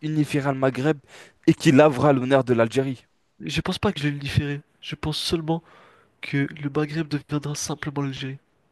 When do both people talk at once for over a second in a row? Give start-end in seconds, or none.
none